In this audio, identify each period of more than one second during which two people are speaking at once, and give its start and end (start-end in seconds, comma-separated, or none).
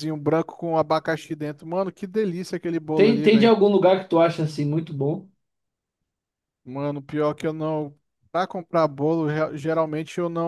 none